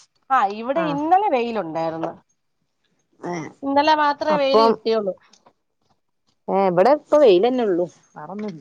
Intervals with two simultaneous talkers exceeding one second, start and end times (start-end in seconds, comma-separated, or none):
none